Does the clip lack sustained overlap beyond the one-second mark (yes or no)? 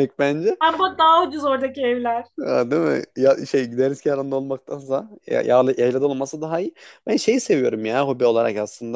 yes